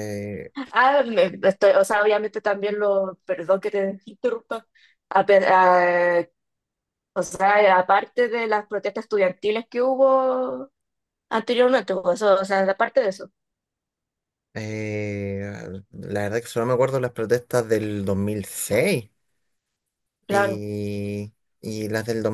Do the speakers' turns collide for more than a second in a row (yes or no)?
no